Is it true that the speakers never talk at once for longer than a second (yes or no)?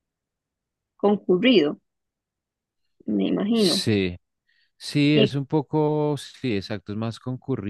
yes